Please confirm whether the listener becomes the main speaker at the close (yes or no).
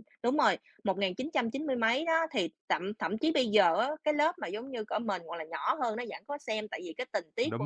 no